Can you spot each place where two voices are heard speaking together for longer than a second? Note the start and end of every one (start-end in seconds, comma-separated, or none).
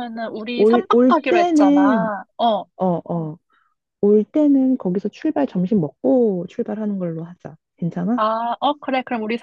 0.6-2.1